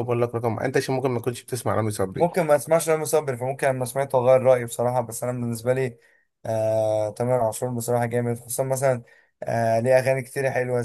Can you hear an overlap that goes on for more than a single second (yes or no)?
no